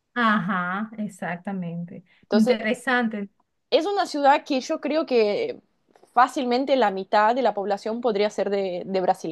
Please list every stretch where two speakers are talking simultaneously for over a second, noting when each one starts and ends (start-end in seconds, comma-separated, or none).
none